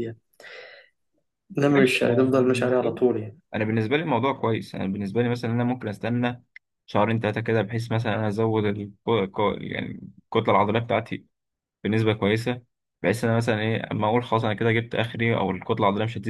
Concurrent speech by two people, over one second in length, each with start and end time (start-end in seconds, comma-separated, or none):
1.8-3.0